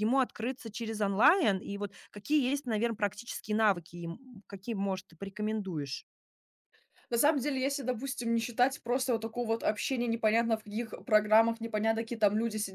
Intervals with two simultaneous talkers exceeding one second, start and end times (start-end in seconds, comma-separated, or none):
none